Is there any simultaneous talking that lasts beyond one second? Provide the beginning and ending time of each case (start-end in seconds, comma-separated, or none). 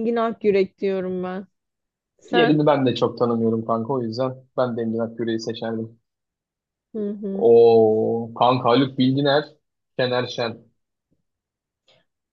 none